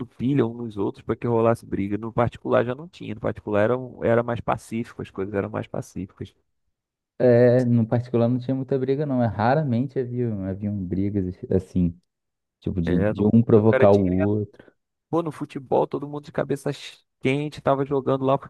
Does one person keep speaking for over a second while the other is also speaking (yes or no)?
yes